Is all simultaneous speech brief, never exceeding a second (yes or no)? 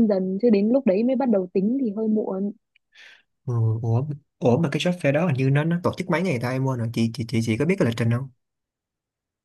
yes